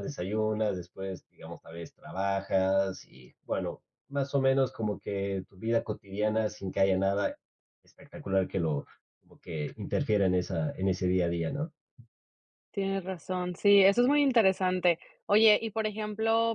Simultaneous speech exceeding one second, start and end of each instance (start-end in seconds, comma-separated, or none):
none